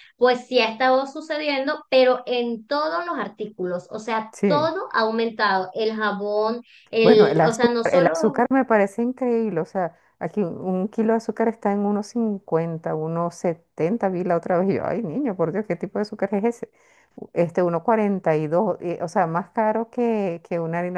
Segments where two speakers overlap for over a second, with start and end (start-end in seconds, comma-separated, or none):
7.0-8.5